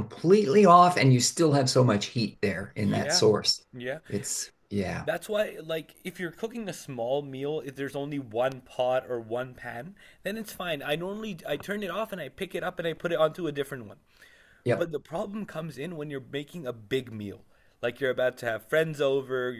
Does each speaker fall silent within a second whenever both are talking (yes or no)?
yes